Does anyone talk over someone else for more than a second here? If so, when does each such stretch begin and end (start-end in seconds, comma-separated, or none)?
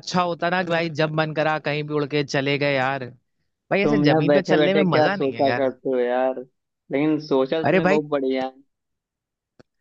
3.8-5.7